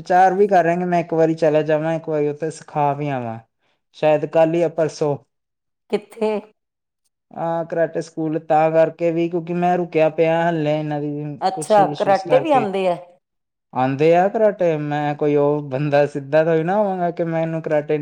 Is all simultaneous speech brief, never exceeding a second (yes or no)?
yes